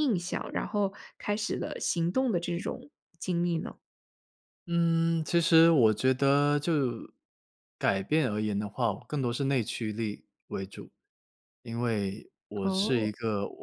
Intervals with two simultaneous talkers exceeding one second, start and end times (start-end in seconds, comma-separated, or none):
none